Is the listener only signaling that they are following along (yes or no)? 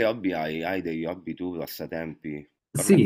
no